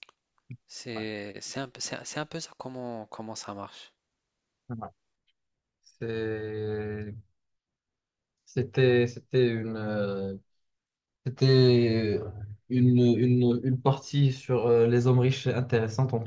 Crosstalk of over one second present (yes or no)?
no